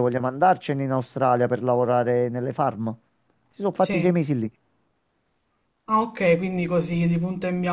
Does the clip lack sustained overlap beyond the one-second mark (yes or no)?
yes